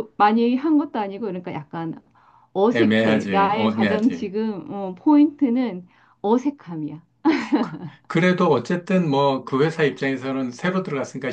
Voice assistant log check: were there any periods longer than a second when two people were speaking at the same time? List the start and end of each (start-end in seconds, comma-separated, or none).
2.7-4.3